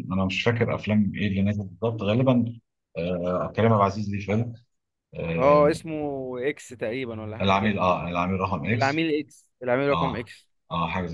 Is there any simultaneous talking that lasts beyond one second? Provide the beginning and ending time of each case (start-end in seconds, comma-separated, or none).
none